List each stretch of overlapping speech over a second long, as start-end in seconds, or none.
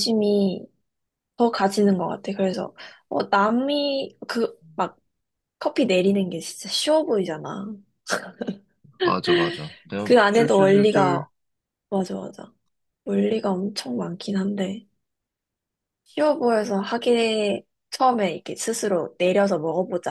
10.0-11.3